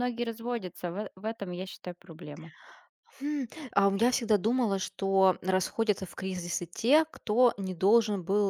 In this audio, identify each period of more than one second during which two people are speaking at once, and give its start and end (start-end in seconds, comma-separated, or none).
none